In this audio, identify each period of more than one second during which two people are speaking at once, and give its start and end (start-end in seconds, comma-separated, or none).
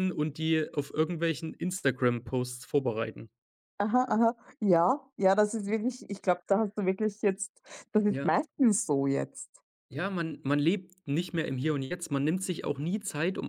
none